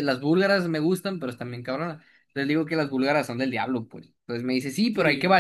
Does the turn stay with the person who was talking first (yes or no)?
yes